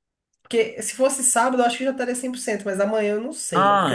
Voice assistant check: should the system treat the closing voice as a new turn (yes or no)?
yes